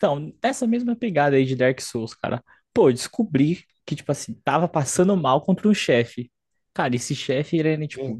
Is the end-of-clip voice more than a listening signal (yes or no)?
no